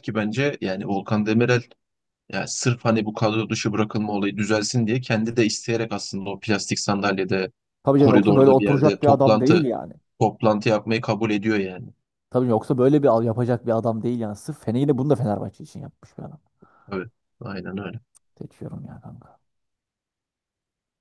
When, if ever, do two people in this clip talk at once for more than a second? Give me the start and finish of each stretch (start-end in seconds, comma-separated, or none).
8.0-9.7